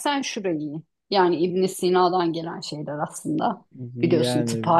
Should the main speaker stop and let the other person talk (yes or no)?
no